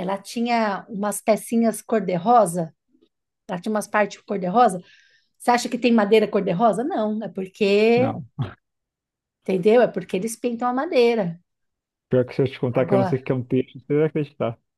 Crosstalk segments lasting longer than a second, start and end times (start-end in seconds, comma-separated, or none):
none